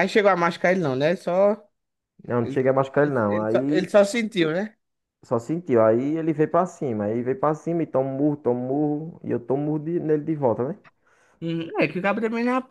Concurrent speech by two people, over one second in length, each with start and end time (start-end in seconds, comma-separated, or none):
2.4-3.9